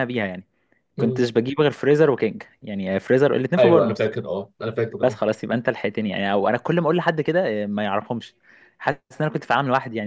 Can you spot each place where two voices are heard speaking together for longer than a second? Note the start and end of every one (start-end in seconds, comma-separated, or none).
none